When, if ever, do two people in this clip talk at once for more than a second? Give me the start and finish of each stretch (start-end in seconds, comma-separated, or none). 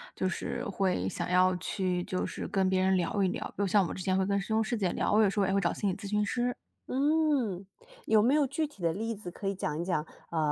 none